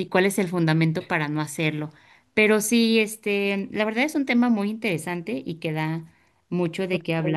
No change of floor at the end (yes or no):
no